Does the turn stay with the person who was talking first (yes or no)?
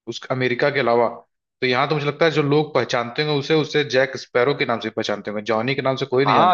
no